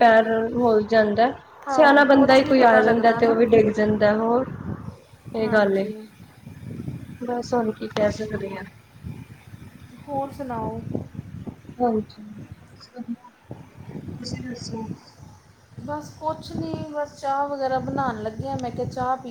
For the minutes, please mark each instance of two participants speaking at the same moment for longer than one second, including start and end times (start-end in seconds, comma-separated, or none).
1.7-3.4